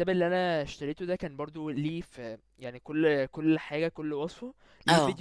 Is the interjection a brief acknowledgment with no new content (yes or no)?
yes